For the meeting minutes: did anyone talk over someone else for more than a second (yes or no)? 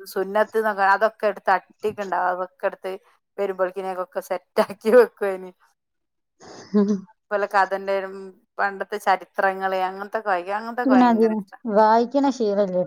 no